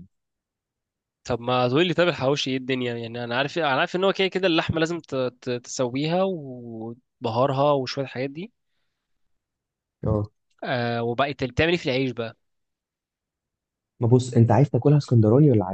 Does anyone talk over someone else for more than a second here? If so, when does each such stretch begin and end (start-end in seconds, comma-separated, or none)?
none